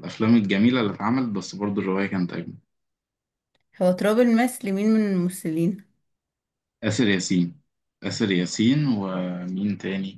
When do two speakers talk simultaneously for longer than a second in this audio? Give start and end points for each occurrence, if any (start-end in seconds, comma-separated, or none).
none